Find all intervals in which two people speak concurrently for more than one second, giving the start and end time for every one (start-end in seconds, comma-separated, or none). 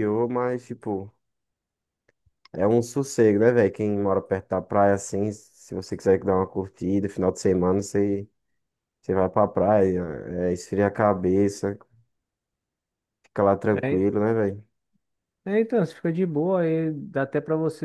none